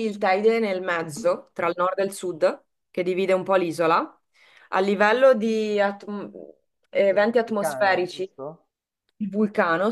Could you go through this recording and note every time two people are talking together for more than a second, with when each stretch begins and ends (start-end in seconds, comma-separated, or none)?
7.1-8.3